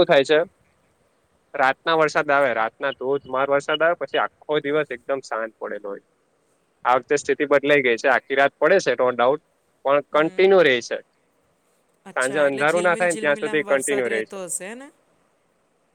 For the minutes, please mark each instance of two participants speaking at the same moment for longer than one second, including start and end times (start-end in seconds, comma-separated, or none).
12.1-14.4